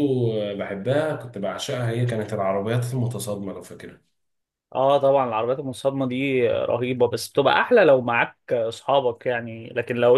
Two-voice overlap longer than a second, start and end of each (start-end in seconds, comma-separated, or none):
none